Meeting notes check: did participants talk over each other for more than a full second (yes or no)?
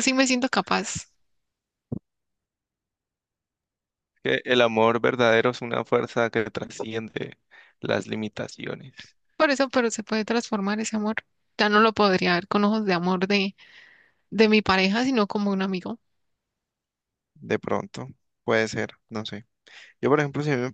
no